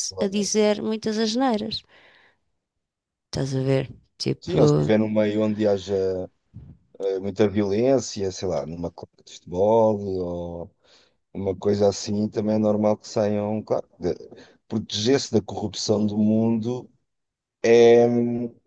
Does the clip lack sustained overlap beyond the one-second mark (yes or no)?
yes